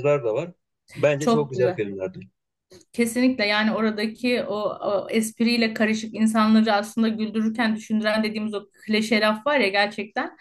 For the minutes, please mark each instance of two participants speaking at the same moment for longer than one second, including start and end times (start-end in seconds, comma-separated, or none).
none